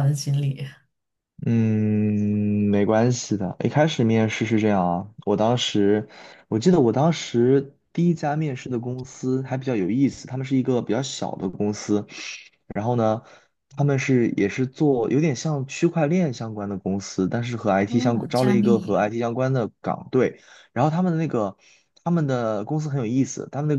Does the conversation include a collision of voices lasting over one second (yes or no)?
yes